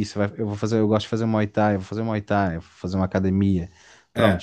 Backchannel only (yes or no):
yes